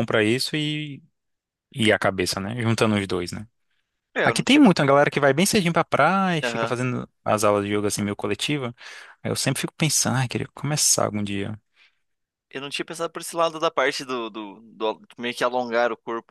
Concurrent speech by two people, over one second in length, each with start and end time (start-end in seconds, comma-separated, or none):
none